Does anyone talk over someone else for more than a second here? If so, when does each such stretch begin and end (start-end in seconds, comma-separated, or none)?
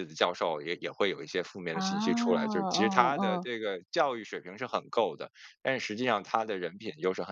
1.7-3.5